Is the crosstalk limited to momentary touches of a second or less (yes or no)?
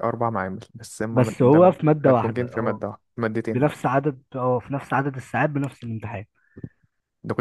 no